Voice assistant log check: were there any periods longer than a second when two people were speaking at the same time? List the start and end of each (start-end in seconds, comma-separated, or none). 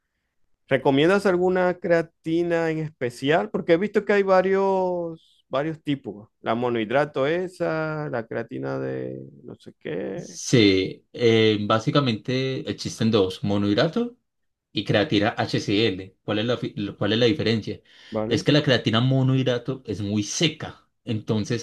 none